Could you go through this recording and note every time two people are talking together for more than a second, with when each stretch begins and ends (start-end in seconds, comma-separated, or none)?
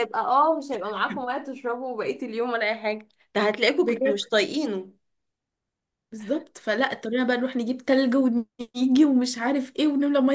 none